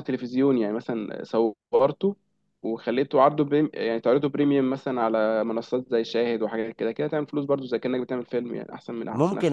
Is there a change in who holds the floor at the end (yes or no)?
yes